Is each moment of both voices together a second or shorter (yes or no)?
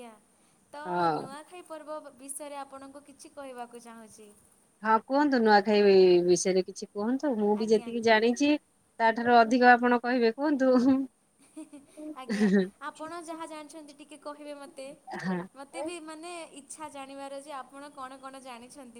yes